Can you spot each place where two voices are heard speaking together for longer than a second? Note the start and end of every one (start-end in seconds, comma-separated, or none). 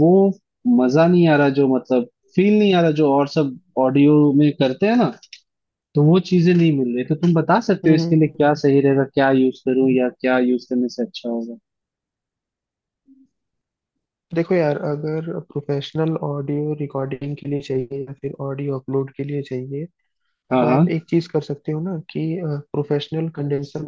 none